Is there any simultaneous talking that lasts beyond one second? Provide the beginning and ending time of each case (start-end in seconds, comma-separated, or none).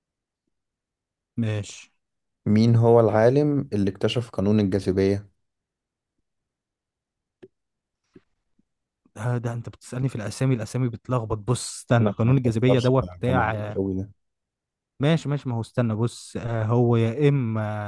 12.0-13.8